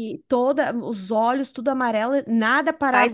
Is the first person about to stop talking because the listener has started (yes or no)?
yes